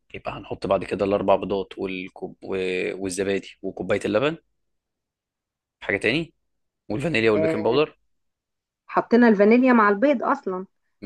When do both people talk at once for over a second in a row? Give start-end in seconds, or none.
none